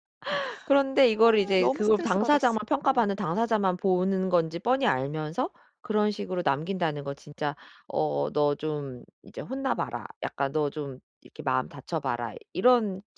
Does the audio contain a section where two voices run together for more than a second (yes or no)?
yes